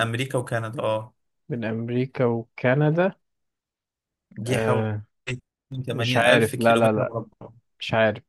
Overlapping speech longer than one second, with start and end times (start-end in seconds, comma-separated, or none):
5.9-7.2